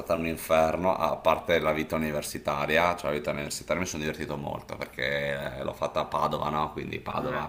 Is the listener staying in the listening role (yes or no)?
yes